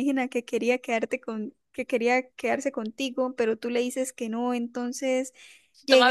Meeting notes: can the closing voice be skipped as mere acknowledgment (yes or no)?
yes